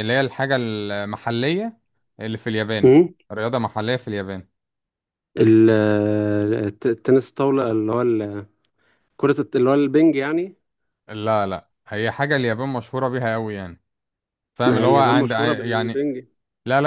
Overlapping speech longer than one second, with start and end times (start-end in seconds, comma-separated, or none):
14.7-16.1